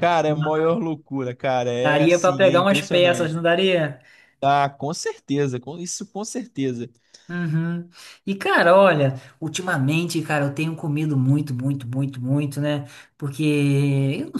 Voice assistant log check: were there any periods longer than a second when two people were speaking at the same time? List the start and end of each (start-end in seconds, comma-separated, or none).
1.8-3.4